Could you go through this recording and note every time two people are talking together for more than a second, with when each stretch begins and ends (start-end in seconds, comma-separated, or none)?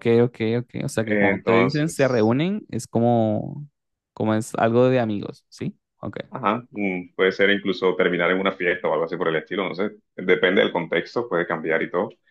1.1-2.3